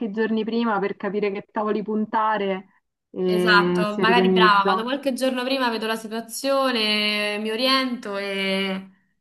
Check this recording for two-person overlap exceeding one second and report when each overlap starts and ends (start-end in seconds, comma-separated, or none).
3.3-4.9